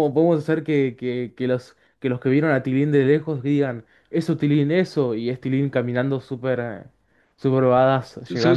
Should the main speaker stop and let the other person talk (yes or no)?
yes